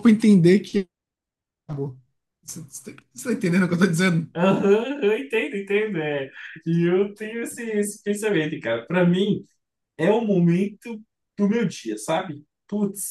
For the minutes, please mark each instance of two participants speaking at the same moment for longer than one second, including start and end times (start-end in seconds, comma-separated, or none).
none